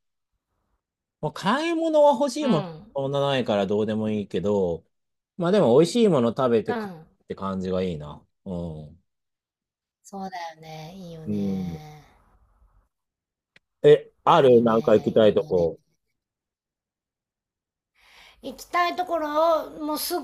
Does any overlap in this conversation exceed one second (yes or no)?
yes